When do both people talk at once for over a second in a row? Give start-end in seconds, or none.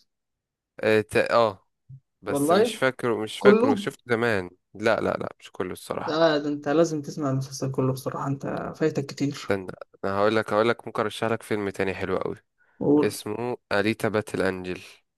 none